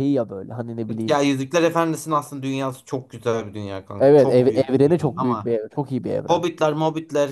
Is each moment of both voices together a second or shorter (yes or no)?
no